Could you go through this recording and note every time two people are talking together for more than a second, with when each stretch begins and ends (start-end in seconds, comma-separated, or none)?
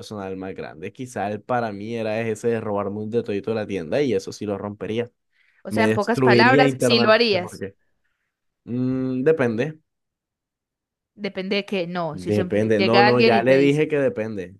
5.7-7.7, 12.1-13.8